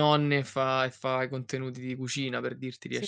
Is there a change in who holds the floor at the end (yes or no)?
yes